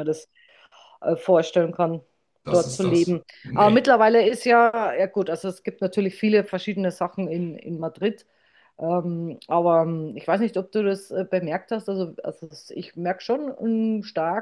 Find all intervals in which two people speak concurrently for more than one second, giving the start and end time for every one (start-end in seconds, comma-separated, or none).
2.5-3.9